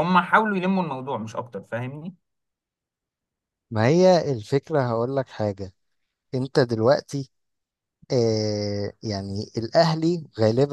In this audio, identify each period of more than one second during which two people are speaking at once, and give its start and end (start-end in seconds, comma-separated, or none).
none